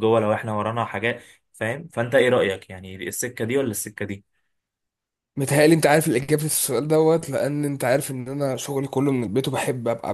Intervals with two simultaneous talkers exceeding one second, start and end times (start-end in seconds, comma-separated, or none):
none